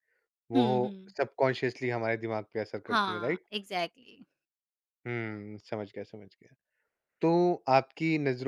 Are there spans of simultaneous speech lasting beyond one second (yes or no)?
no